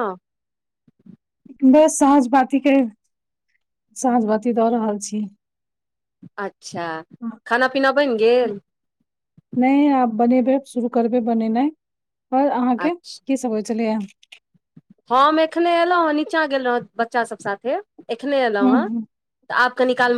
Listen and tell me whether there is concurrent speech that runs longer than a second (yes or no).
no